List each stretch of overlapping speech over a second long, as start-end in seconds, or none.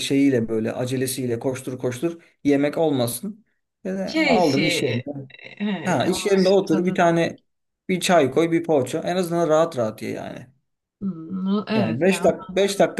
5.8-7.1